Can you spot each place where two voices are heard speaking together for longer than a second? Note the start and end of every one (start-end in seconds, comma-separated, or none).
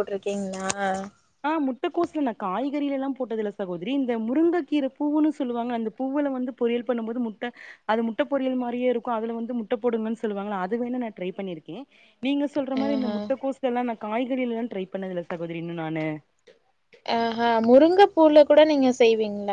none